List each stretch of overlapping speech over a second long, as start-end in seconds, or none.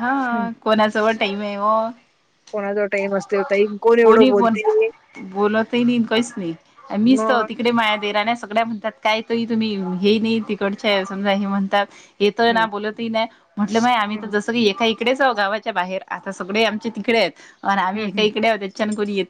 none